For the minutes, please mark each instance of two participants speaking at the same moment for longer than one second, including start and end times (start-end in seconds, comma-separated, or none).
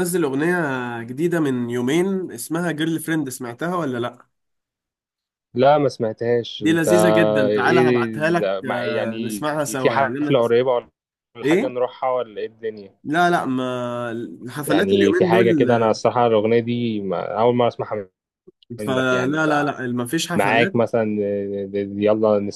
7.5-10.4, 14.7-15.9